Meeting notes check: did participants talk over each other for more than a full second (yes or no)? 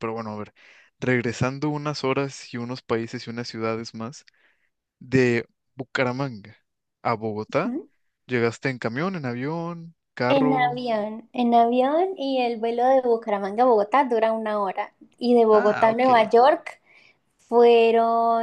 no